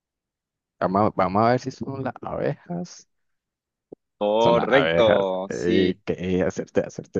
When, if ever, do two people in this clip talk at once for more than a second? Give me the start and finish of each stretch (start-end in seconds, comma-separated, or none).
4.4-6.0